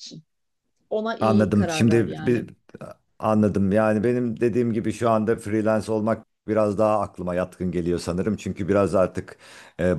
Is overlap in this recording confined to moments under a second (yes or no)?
no